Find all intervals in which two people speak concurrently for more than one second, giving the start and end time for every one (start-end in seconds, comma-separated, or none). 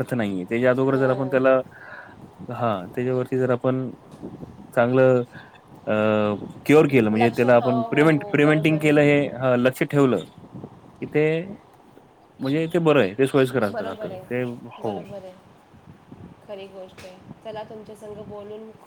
7.2-9.2